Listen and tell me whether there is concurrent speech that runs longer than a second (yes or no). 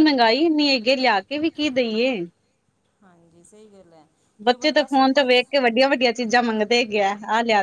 no